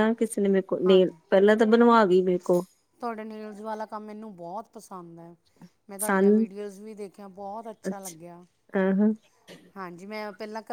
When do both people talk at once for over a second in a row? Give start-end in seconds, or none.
none